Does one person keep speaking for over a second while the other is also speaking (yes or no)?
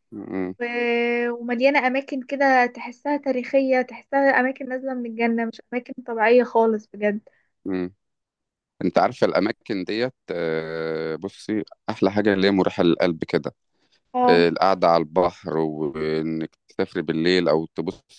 no